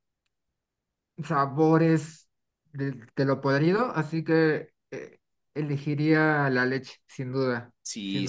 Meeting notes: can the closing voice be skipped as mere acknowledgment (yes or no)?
no